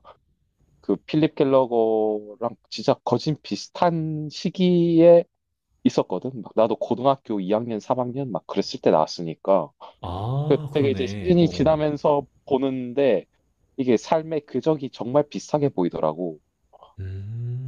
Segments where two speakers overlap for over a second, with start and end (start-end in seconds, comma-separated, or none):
10.5-11.9